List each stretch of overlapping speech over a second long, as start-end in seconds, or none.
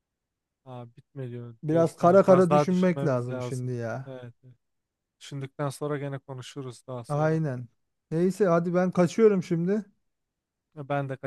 1.6-4.2